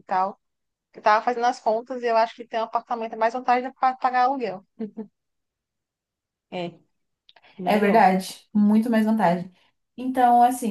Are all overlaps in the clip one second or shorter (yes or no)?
yes